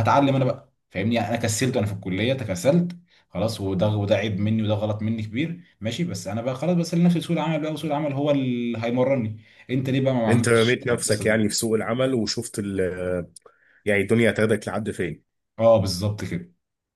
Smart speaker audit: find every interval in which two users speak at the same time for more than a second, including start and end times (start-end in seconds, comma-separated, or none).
10.3-11.6